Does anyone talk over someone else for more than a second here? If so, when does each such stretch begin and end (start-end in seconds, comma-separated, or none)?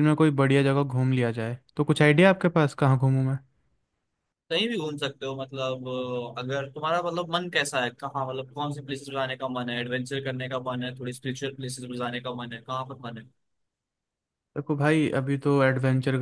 none